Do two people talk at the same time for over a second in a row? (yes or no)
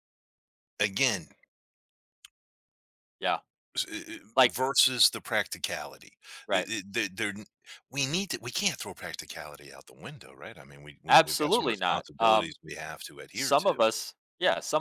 yes